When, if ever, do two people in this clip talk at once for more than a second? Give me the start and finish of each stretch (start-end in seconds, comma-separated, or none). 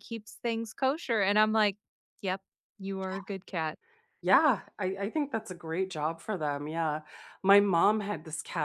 none